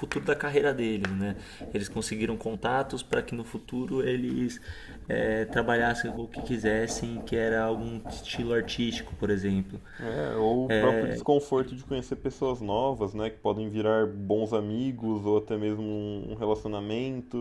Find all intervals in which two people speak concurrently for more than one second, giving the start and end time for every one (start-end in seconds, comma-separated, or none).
none